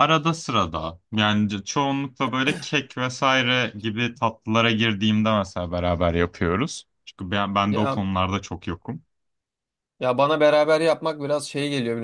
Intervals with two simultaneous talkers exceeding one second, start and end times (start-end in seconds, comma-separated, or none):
none